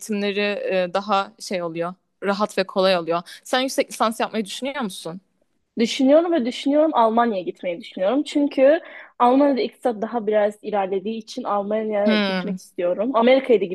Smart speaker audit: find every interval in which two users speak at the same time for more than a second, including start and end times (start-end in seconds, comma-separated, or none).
none